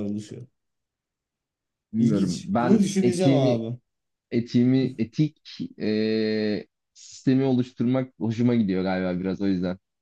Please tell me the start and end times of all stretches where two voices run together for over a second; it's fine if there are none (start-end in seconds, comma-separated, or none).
2.0-3.6